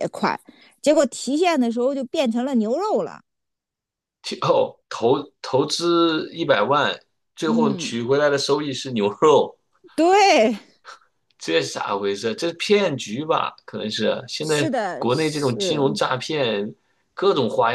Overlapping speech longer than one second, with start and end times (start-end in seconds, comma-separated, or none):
14.4-16.0